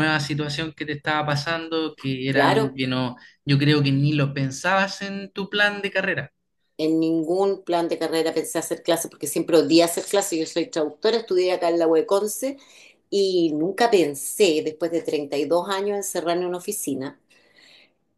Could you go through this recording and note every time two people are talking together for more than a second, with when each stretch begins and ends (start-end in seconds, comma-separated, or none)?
none